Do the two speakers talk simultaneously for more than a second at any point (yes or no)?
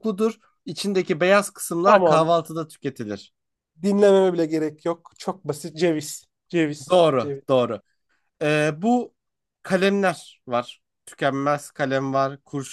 no